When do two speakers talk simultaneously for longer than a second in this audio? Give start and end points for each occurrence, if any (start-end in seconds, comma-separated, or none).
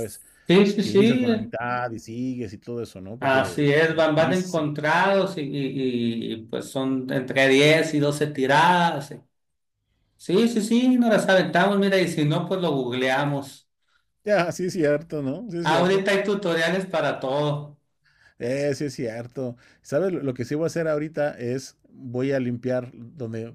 3.2-4.7